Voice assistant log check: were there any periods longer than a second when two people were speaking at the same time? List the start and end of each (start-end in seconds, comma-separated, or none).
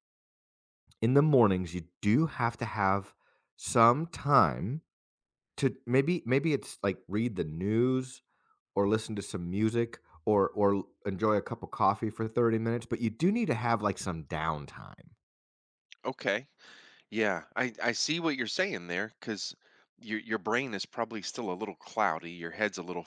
none